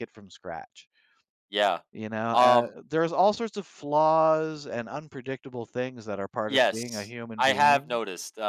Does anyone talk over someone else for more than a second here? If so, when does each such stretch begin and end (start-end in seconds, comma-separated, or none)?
6.5-8.0